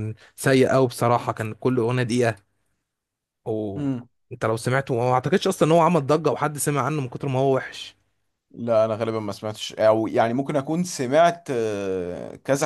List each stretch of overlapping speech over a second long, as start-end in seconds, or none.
none